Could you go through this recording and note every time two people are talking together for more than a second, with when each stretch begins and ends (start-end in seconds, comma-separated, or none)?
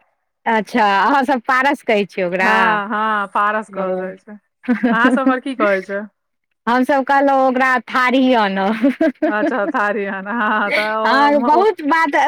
none